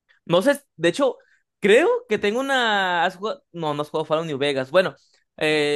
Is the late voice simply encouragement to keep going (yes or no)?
yes